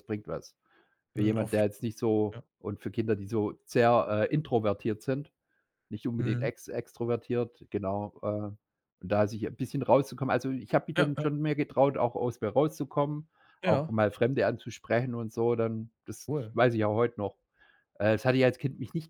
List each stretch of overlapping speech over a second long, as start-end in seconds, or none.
none